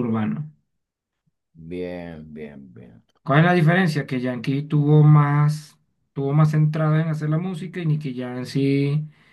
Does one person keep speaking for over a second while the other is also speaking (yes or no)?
no